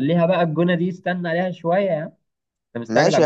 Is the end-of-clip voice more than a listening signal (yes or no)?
yes